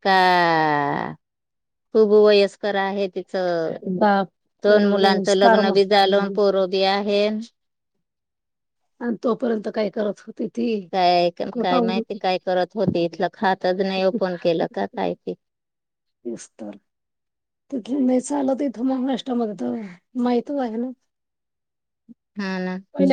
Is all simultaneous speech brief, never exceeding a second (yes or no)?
no